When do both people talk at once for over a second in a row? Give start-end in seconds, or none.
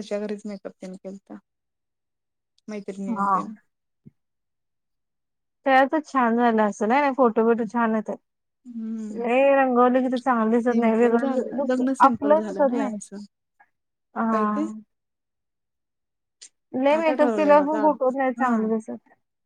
10.6-13.0, 17.0-18.6